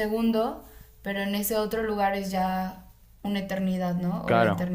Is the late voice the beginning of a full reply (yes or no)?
yes